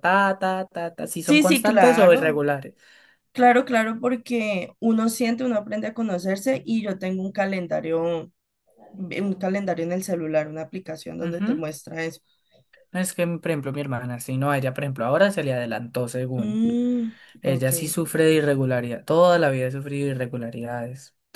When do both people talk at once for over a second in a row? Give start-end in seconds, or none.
1.2-2.4